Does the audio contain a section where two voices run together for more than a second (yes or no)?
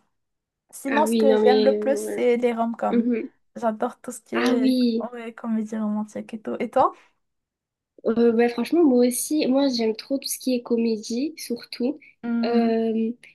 yes